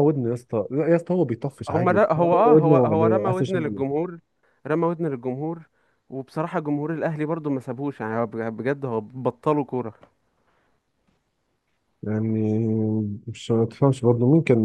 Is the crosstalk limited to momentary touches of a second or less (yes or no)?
no